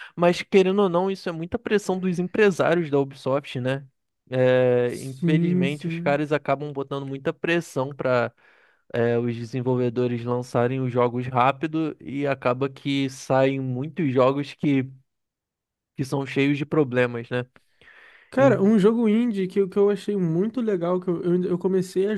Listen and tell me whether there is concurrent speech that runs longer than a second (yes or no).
yes